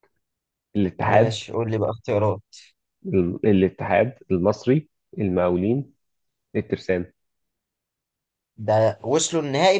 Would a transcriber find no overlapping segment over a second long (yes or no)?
yes